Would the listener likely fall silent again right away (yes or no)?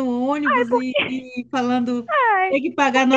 yes